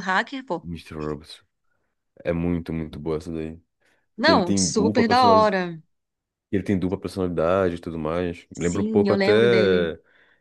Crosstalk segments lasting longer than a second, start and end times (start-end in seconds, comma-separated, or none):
4.2-5.5, 8.5-9.9